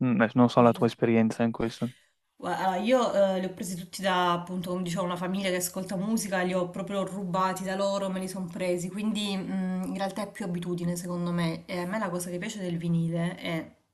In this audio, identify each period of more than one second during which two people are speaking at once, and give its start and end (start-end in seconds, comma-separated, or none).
none